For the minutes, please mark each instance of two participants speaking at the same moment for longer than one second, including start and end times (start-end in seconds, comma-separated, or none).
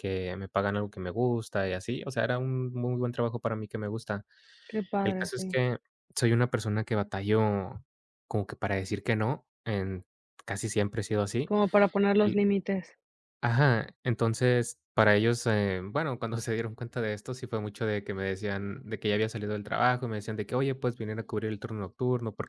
none